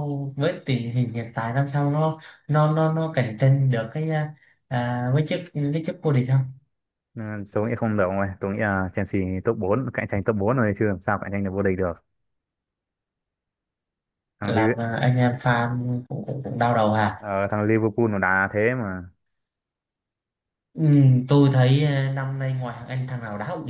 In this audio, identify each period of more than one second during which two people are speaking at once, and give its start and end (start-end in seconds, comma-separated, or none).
none